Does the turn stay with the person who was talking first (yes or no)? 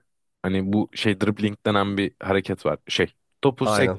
yes